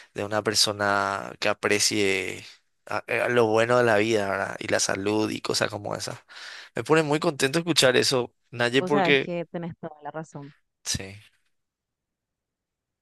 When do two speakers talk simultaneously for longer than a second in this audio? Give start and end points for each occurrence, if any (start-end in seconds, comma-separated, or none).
none